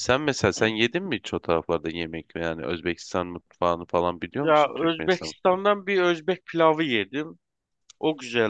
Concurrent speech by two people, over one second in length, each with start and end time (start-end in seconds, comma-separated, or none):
4.4-5.6